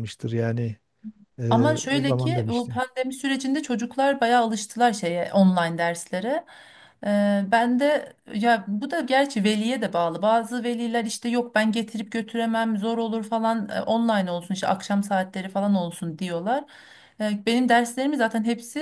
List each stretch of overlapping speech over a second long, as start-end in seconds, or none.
1.5-2.8